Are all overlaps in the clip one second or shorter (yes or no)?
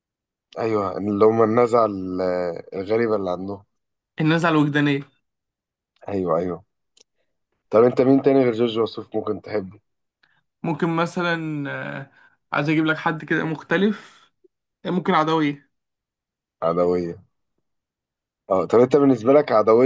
yes